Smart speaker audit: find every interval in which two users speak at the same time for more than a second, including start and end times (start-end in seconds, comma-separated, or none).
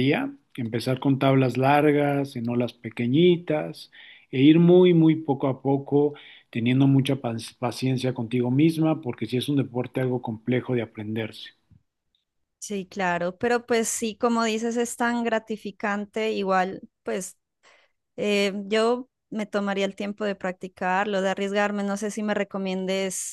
none